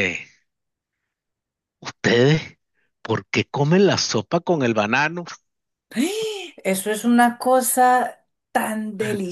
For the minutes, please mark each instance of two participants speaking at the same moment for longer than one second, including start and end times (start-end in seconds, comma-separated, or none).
none